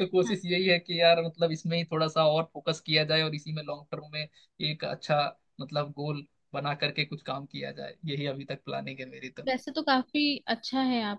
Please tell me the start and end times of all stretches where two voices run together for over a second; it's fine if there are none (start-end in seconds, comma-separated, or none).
none